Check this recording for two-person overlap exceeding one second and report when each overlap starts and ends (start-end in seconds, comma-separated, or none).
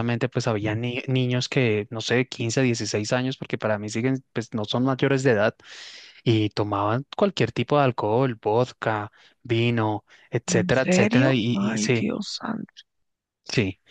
10.5-12.1